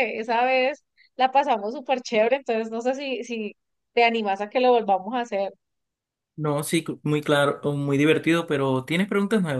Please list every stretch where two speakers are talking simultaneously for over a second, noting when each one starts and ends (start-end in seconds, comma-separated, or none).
none